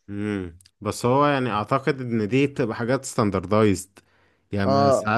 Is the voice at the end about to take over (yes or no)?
no